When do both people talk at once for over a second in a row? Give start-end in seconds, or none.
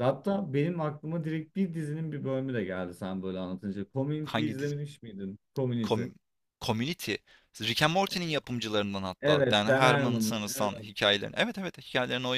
9.2-10.9